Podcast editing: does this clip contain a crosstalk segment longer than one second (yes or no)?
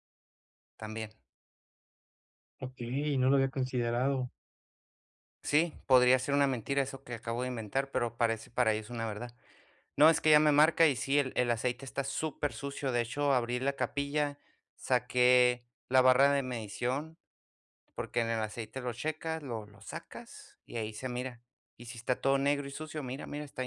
no